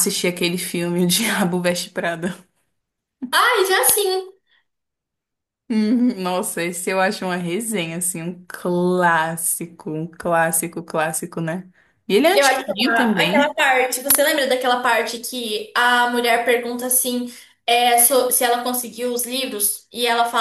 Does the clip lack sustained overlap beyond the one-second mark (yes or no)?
no